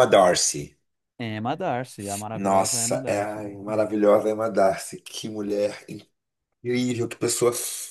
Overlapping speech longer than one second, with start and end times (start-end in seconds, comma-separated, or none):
2.3-3.8